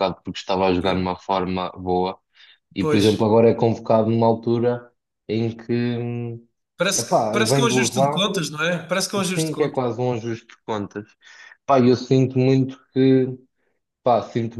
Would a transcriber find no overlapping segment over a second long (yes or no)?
no